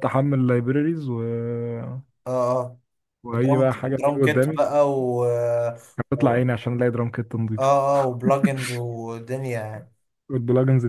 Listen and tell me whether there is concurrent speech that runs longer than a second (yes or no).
yes